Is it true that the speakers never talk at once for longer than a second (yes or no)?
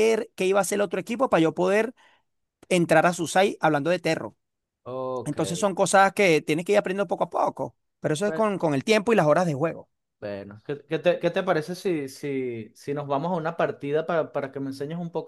yes